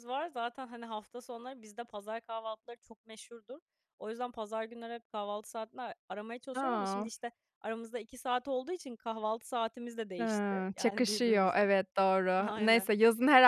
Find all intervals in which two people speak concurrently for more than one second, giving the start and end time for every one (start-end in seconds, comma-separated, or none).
10.2-11.7